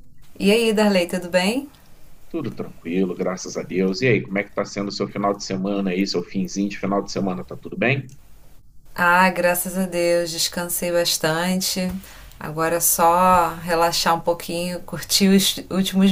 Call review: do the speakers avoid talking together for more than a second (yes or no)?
yes